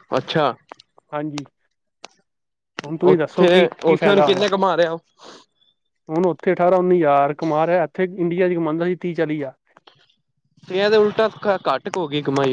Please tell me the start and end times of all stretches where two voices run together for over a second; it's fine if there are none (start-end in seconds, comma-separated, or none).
3.1-4.4